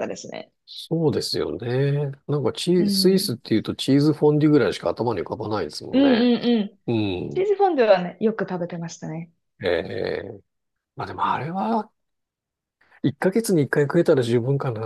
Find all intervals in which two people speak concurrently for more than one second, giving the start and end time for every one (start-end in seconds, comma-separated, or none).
none